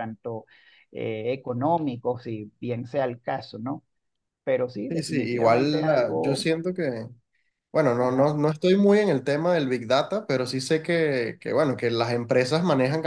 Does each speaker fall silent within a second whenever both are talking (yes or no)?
no